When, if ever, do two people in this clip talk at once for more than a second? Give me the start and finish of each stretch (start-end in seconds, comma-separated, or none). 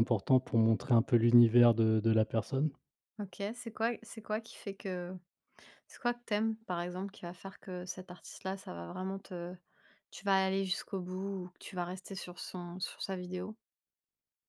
none